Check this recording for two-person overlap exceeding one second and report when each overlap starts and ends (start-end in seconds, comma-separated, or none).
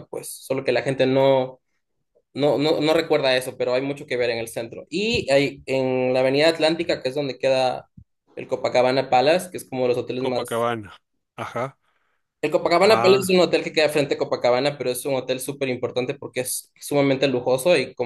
none